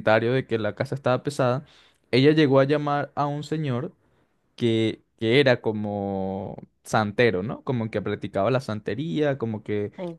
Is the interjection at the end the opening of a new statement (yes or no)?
no